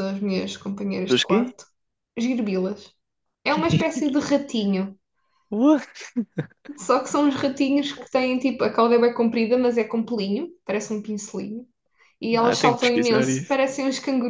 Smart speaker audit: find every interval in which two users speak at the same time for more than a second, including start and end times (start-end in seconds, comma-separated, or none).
12.3-13.6